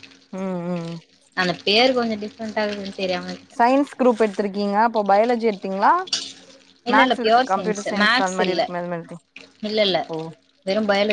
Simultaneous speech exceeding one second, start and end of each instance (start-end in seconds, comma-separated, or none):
6.9-8.6